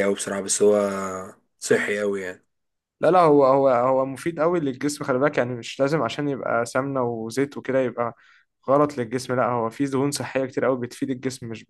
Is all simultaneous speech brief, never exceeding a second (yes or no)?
yes